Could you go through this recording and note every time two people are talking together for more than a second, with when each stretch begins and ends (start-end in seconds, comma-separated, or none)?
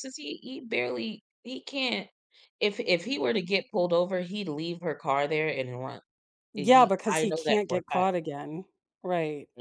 6.6-8.1